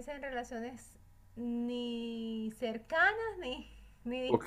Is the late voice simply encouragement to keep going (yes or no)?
no